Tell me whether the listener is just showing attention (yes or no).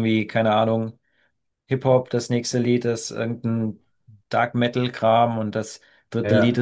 yes